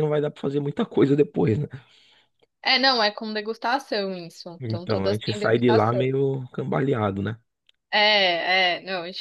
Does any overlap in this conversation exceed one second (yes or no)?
yes